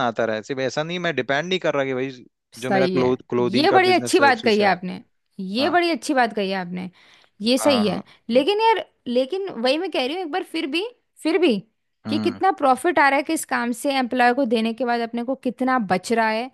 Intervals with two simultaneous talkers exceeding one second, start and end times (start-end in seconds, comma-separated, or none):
2.6-4.8